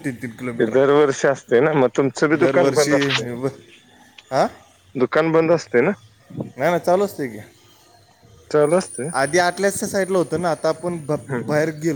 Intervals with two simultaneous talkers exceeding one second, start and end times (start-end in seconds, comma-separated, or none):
none